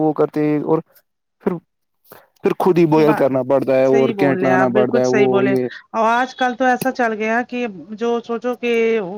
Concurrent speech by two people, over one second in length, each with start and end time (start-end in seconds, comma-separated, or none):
3.9-5.5